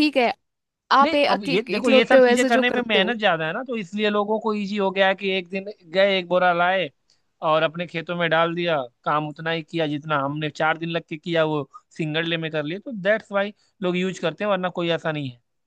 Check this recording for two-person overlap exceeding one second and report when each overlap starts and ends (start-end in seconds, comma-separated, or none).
1.0-3.1